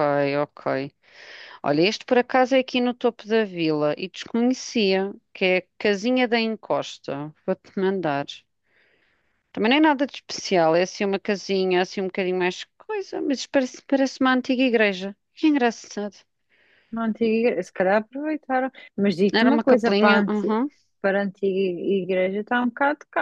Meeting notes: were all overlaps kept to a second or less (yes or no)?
no